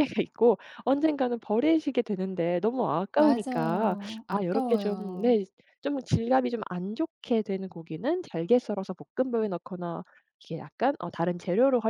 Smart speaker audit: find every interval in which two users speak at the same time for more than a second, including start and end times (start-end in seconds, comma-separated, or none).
3.1-5.4